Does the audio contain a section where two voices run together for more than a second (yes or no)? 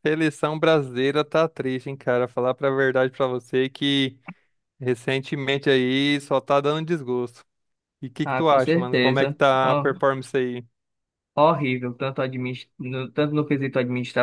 yes